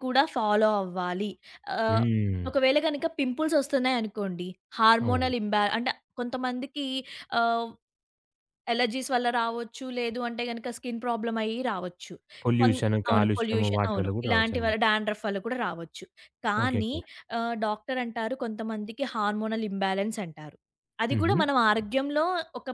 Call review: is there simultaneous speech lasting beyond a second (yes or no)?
yes